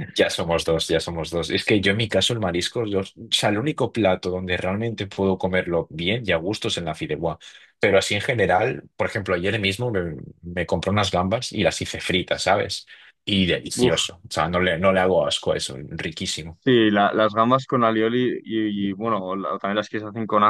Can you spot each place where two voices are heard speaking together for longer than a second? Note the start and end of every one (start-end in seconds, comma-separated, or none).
none